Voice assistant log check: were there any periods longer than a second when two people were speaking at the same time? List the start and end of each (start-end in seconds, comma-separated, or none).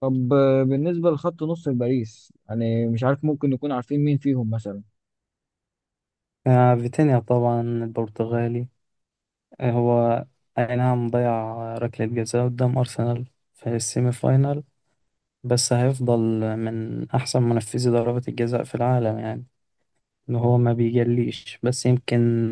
none